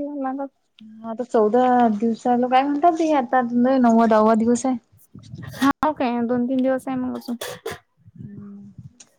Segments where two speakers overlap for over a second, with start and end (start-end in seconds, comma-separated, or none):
none